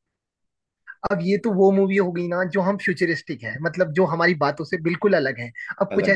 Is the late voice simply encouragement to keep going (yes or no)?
yes